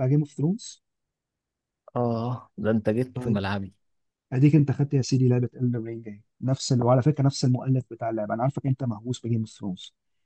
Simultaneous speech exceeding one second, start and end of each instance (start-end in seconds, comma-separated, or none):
none